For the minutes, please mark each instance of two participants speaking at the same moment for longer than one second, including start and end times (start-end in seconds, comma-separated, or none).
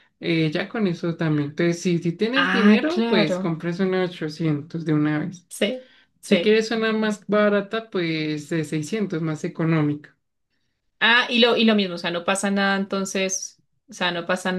2.3-3.5